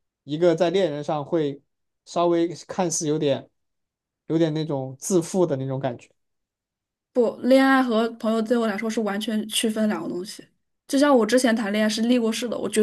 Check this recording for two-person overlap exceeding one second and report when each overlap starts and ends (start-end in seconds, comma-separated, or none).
none